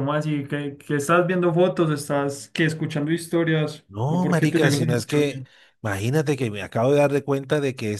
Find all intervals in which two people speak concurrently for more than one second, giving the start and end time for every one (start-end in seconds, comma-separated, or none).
3.9-5.4